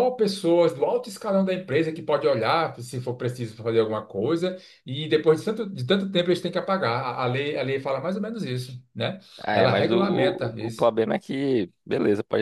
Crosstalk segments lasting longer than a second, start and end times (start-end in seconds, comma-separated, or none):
9.4-10.9